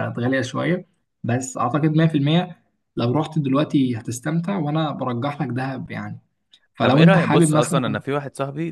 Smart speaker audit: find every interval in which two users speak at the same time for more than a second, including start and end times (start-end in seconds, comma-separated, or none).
6.8-8.0